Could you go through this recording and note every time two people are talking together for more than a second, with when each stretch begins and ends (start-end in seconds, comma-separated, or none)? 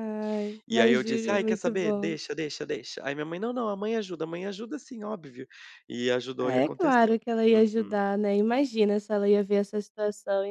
0.7-2.1, 6.4-8.0